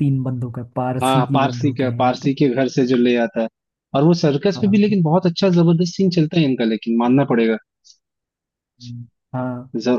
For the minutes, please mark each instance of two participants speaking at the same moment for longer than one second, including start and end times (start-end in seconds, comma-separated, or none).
1.0-2.3